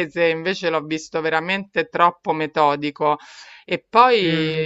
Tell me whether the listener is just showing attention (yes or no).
yes